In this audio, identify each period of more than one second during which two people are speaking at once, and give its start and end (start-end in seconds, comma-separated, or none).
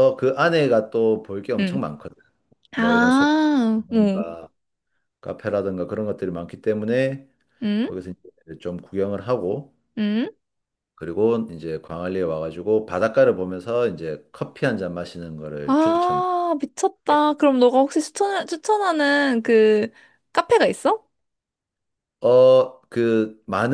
2.8-4.2